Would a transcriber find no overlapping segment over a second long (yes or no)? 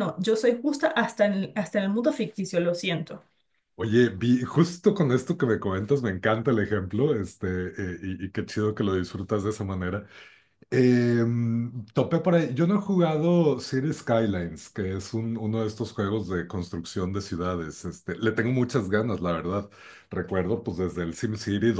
yes